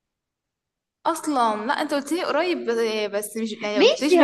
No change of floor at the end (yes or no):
no